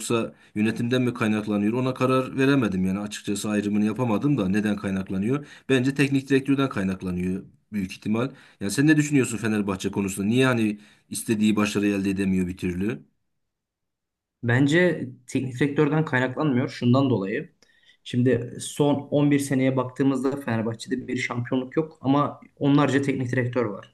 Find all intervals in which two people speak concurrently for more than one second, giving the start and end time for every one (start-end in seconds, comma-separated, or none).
none